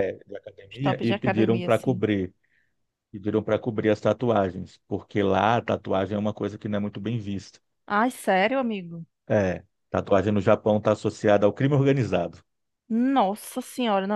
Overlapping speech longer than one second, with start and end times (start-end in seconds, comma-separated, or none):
0.7-2.0